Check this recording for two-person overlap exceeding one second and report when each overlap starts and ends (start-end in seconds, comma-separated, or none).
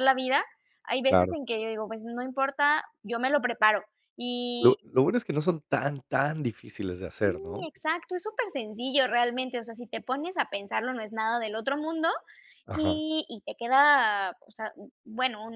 none